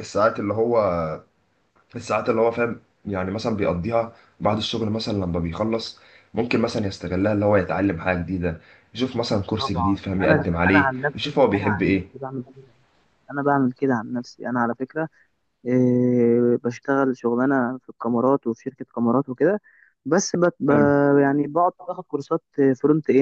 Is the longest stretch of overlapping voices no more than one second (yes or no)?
no